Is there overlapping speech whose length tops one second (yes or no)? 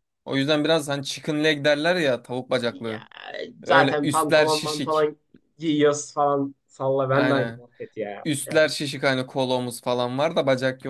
yes